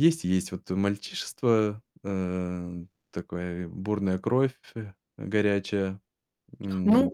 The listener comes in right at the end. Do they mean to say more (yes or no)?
yes